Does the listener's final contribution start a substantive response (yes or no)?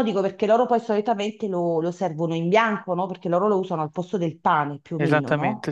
yes